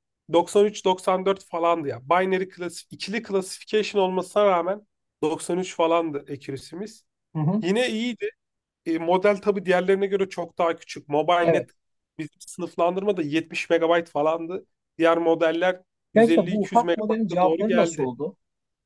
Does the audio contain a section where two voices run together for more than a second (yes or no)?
yes